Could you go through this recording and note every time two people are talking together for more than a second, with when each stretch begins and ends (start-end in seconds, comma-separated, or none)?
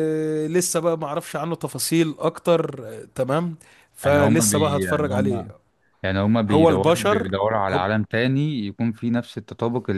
4.0-5.5, 6.5-7.8